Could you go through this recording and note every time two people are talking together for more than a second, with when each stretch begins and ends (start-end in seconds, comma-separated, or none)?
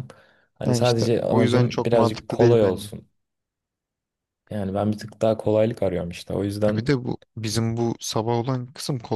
0.6-2.9